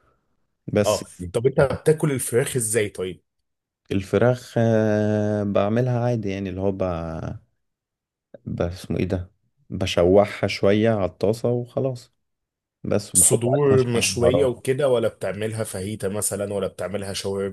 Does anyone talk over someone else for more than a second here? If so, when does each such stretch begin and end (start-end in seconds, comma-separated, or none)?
13.1-14.6